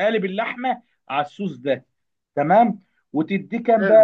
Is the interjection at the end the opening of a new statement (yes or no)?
no